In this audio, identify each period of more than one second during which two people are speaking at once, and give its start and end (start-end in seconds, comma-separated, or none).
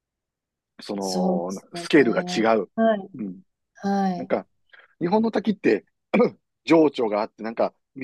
1.0-2.7